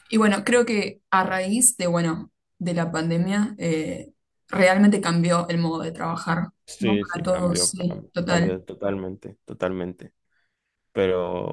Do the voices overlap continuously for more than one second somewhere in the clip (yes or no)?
yes